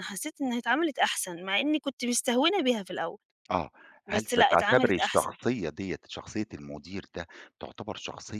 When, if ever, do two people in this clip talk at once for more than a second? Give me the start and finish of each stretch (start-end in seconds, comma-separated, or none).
4.1-5.3